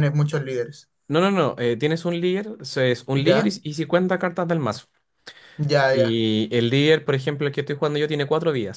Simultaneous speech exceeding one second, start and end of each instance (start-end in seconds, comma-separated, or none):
none